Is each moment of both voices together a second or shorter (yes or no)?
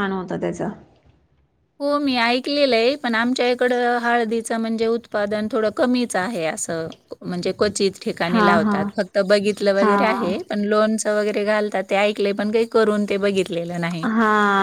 yes